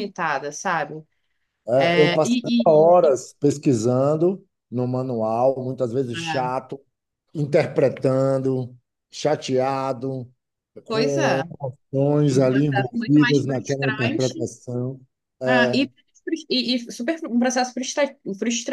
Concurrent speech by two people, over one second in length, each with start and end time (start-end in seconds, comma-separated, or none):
1.8-3.2, 12.3-14.5